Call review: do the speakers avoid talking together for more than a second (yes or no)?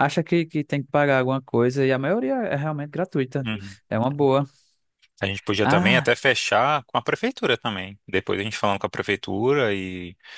yes